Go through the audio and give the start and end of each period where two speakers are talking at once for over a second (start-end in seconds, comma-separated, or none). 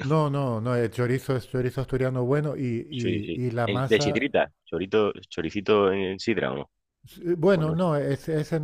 2.9-4.3